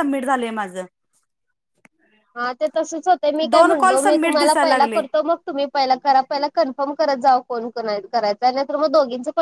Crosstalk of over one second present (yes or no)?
yes